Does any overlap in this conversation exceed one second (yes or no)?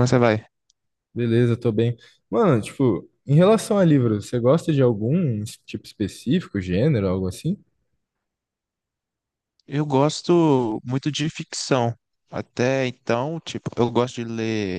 no